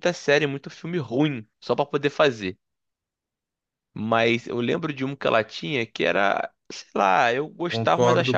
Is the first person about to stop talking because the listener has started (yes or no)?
yes